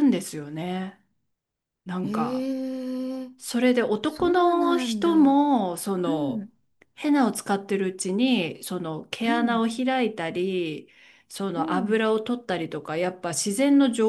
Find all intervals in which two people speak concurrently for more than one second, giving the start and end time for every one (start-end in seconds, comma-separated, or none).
4.1-5.4